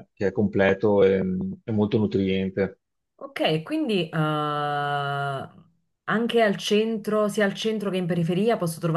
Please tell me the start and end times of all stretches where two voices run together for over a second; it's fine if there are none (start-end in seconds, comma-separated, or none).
none